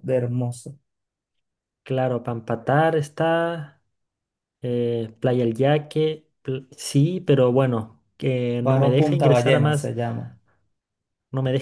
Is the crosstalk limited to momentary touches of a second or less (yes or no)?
no